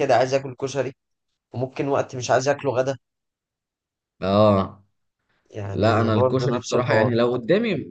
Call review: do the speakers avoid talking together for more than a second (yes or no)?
no